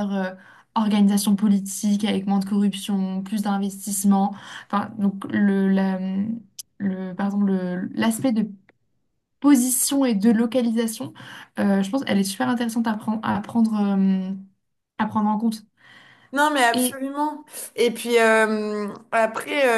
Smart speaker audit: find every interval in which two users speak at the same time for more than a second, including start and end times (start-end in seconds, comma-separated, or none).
none